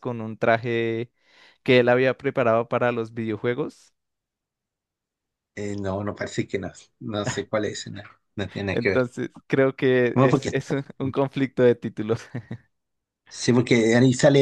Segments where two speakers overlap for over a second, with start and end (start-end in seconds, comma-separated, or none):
none